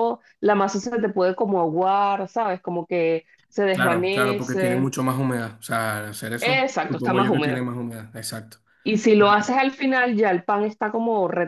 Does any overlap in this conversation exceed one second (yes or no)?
yes